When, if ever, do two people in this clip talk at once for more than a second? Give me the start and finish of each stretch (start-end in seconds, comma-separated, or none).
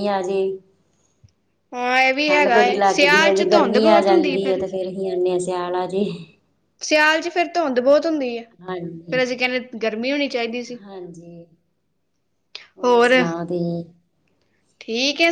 2.3-4.6